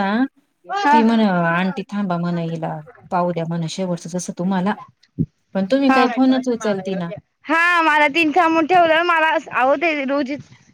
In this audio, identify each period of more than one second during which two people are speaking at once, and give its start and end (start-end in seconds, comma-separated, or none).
none